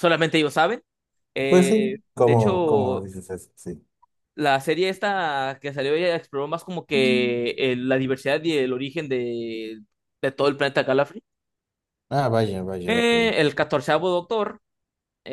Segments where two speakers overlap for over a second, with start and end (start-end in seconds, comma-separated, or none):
1.5-3.1